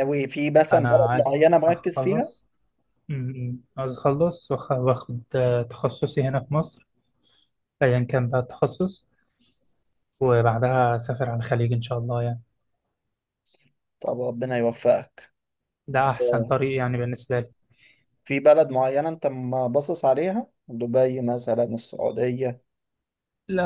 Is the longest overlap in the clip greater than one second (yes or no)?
yes